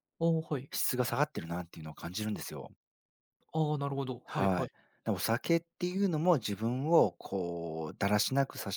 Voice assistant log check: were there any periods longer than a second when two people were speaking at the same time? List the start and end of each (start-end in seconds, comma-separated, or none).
none